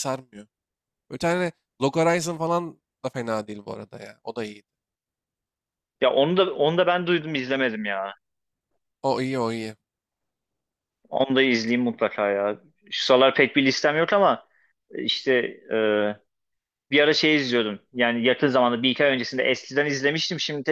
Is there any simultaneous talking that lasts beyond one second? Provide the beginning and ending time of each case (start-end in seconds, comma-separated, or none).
none